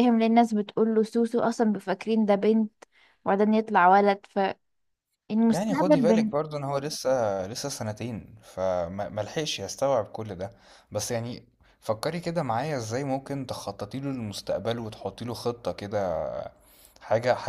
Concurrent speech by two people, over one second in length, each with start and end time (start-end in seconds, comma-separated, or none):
none